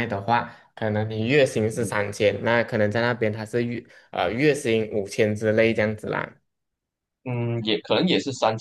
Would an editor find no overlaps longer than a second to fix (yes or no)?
yes